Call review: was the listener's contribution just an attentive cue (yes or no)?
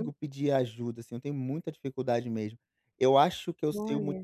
yes